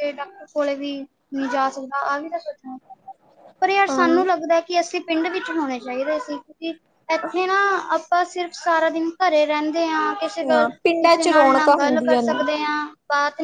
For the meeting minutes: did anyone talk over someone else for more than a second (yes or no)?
yes